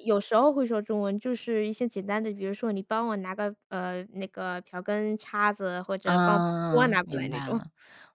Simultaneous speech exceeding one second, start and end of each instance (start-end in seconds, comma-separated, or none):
6.0-7.6